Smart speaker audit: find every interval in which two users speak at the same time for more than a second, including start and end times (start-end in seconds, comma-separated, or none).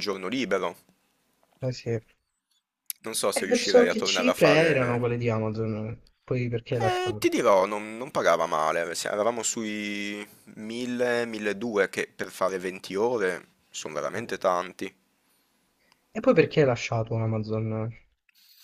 3.5-5.1